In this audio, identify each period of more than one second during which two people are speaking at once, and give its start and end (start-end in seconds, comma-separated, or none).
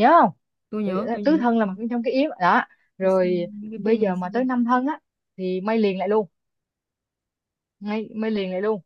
3.0-4.4